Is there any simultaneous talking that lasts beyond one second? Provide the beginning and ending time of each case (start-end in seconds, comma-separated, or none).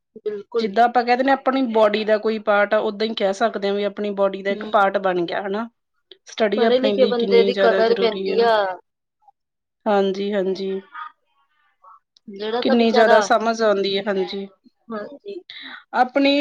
6.5-8.4